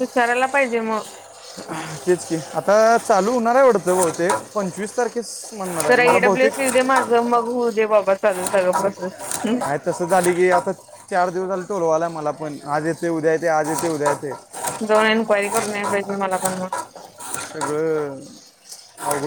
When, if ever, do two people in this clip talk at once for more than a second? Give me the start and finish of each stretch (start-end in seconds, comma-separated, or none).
none